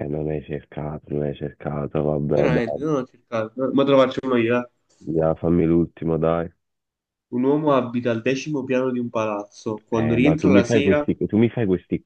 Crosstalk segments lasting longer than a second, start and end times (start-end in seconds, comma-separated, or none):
9.9-11.1